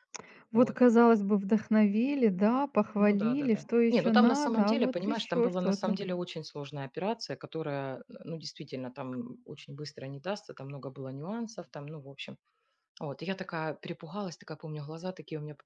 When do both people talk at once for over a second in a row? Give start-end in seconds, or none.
3.0-6.0